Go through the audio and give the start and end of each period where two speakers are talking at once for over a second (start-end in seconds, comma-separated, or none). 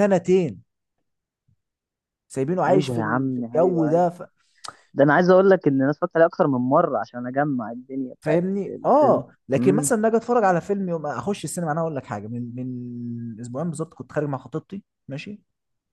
2.7-4.0, 8.2-9.9